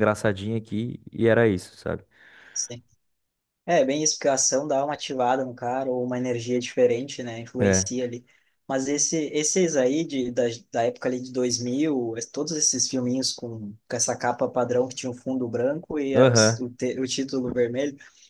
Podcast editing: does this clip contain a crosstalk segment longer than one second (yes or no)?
no